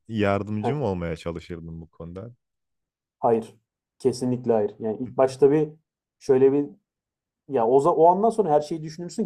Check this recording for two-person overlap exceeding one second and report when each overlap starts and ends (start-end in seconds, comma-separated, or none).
none